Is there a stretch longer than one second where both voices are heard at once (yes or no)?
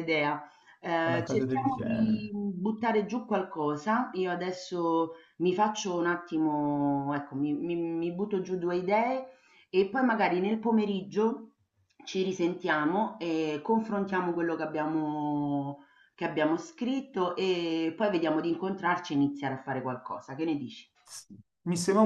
yes